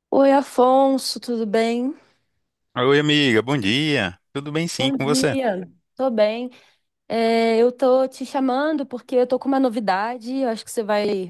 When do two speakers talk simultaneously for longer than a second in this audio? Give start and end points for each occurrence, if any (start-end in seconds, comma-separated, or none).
none